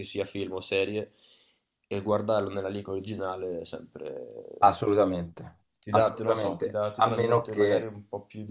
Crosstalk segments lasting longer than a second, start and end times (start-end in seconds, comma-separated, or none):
5.8-7.9